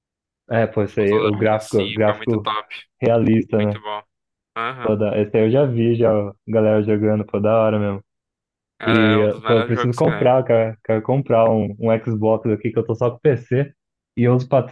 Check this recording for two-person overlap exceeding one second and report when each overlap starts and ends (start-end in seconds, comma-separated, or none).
0.9-2.5, 8.9-10.3